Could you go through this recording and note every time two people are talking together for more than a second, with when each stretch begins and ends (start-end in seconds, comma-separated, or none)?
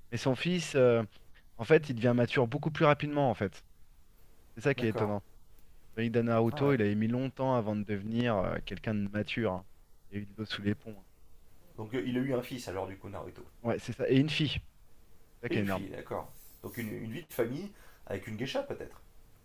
none